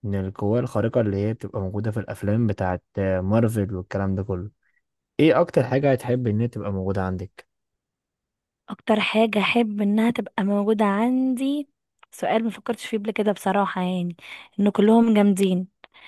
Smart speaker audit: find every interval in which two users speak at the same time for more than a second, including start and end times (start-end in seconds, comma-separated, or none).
none